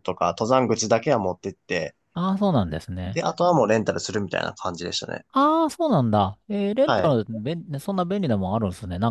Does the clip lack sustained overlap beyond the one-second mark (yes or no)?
yes